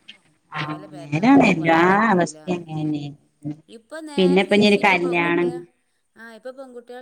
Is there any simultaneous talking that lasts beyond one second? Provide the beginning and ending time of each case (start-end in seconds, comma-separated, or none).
0.7-2.6, 4.2-5.5